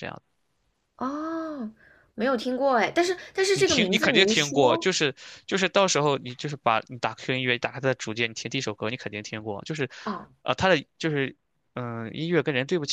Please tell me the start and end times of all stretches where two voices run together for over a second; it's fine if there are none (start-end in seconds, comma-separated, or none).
3.5-4.9